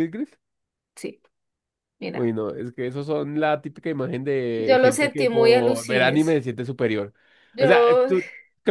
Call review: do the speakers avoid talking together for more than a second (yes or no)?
no